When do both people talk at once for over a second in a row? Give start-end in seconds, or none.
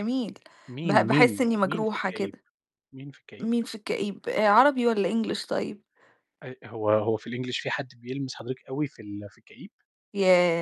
0.8-2.4